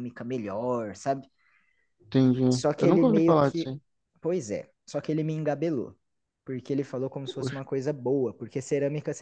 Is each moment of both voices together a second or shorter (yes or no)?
no